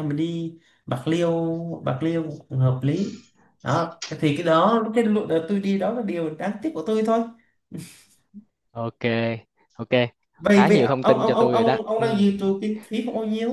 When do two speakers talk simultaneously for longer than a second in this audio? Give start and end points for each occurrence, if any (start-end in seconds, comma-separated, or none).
10.5-12.1